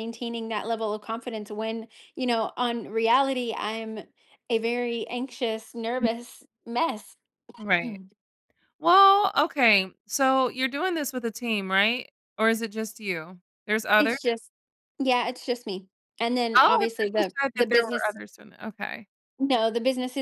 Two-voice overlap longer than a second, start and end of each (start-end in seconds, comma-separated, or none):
16.6-18.2